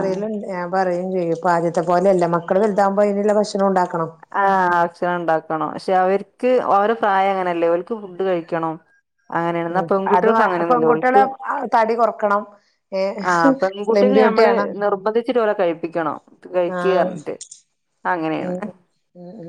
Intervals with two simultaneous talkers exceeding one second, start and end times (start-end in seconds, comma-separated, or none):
9.8-11.2